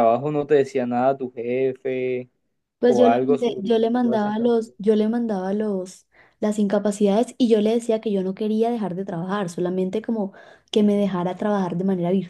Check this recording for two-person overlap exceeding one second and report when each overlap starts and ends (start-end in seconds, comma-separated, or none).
2.9-4.8